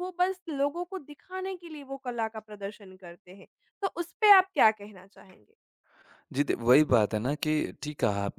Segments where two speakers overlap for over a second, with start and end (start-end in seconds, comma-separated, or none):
none